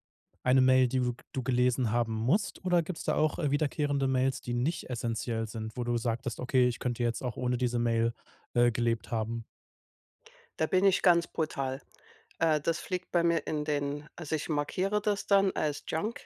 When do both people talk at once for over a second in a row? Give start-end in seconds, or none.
none